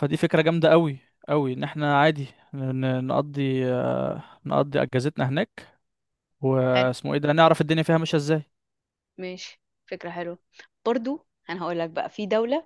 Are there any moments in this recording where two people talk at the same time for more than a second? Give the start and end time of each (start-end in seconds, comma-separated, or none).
none